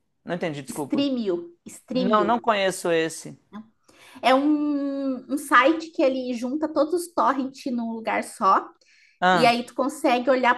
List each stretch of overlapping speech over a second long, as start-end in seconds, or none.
none